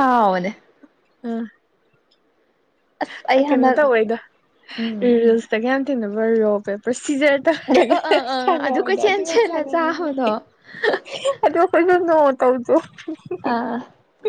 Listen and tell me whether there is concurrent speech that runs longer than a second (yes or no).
yes